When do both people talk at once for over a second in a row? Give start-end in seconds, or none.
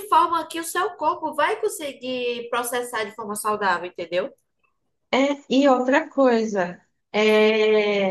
none